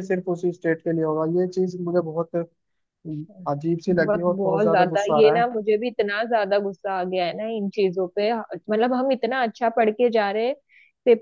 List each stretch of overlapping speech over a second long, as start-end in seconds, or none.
3.9-5.5